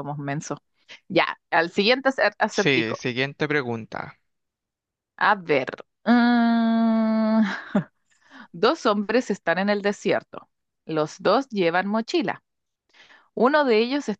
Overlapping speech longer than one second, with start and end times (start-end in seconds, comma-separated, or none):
none